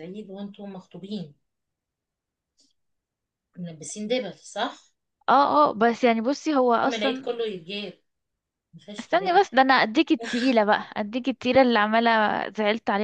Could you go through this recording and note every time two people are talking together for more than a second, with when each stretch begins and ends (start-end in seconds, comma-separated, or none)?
none